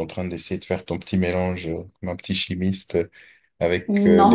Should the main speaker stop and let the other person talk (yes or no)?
no